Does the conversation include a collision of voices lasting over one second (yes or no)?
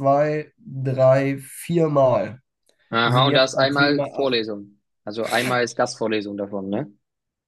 yes